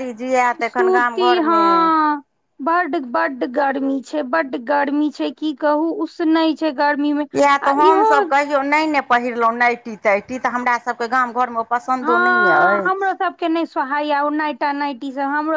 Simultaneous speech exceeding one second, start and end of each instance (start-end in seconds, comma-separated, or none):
none